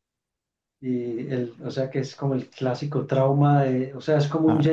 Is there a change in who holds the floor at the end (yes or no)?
no